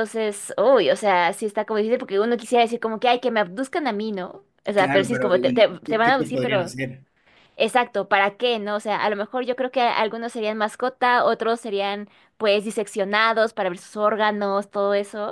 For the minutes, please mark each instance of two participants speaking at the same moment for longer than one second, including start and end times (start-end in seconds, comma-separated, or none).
4.7-6.7